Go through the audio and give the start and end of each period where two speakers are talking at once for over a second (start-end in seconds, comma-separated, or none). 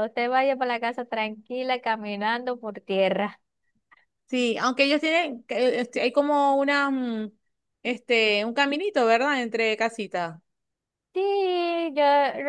none